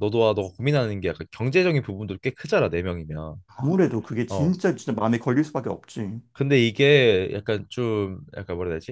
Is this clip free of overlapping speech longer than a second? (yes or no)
yes